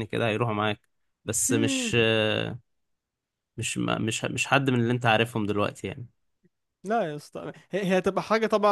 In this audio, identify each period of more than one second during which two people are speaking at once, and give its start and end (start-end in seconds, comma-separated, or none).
none